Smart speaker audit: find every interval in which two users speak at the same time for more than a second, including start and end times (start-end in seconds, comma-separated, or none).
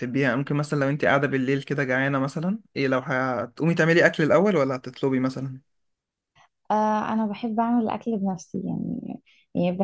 none